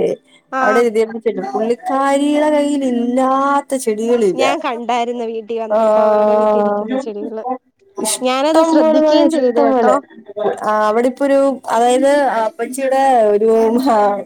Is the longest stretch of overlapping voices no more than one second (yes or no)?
no